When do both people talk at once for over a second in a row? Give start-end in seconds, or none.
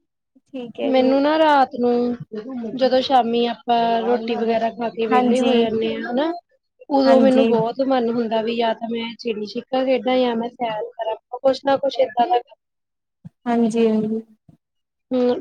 none